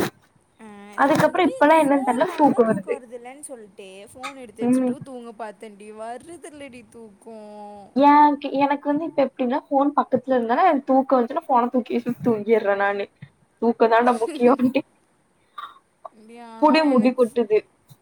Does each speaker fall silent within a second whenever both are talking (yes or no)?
no